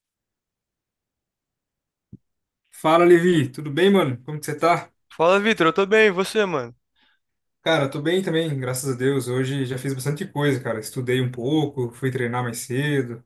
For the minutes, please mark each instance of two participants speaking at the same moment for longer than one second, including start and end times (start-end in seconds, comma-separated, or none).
none